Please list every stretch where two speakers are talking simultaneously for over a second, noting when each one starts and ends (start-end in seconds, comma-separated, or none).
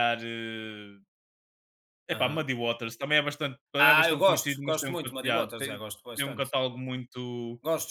3.9-6.5